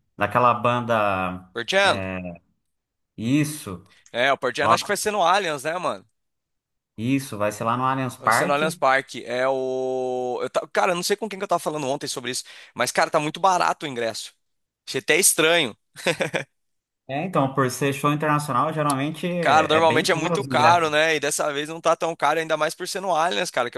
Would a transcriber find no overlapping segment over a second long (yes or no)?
no